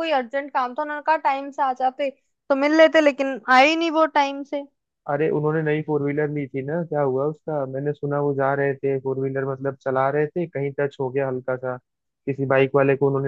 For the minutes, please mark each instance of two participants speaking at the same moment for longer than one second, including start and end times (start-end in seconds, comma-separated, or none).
none